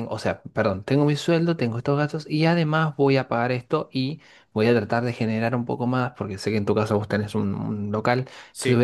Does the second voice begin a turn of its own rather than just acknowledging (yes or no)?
no